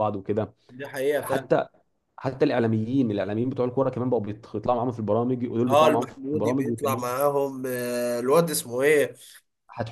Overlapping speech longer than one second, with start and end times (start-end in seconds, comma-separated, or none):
5.7-7.1